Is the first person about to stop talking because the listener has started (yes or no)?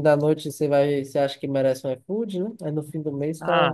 yes